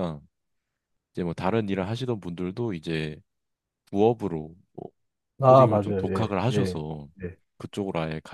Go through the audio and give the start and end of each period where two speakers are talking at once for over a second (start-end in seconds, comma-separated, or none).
5.5-6.8